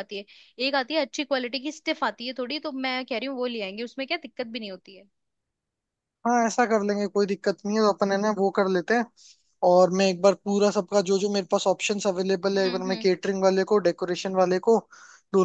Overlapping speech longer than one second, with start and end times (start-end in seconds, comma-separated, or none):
none